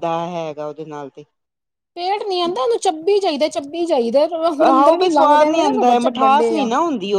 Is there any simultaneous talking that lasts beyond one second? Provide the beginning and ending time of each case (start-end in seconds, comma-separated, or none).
4.7-6.7